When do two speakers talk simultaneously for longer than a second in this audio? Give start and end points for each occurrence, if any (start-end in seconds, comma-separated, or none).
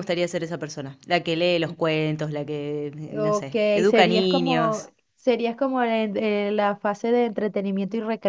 3.1-4.9